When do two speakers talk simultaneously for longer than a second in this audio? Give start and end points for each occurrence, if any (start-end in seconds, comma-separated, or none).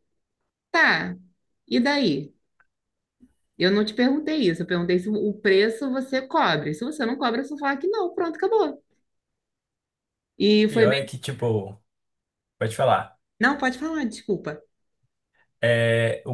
none